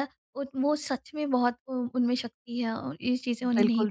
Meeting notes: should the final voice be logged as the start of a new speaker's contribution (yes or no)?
yes